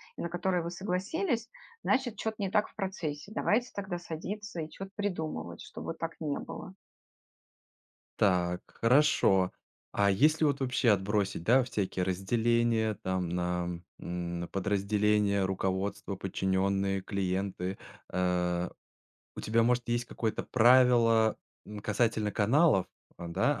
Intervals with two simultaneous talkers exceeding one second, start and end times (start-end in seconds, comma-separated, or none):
none